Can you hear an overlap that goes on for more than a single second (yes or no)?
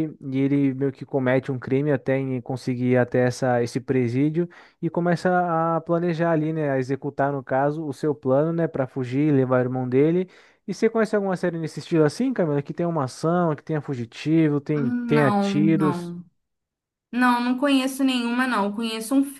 yes